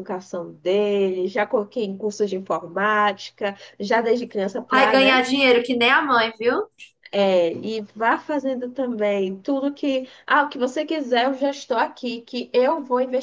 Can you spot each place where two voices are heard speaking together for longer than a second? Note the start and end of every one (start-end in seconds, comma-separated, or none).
none